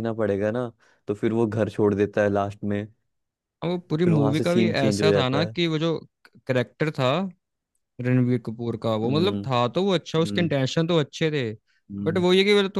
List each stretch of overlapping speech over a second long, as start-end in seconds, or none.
4.0-5.5